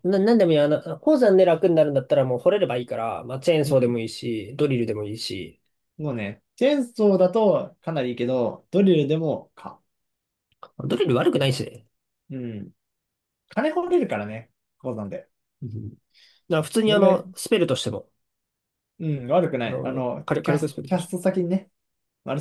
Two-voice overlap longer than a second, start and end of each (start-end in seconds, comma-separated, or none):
19.6-21.1